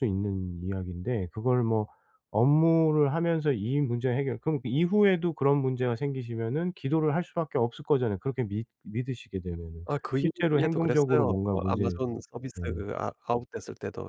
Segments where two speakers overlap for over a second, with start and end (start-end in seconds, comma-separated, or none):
9.8-12.0